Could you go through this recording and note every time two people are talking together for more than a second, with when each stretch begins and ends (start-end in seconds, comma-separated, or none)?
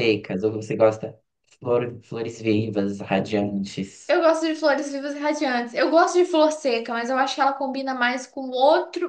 none